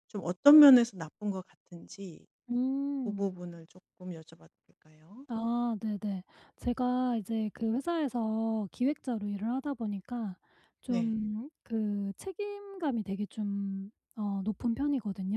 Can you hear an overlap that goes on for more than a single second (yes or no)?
no